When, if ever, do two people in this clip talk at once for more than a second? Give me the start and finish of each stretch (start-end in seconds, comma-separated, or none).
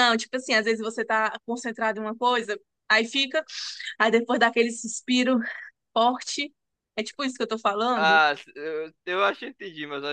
none